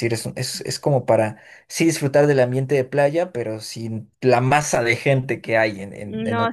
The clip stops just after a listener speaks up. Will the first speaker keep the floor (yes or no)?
no